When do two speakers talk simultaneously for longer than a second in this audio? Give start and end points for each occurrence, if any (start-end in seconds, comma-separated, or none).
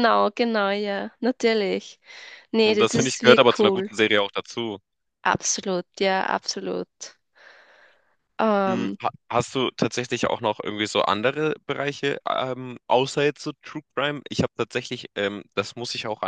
2.6-3.9